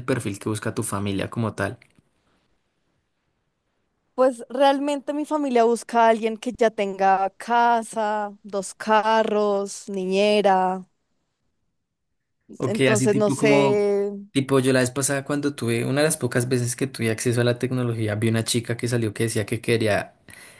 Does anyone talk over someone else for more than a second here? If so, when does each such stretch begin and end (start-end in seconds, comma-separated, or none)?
12.6-13.9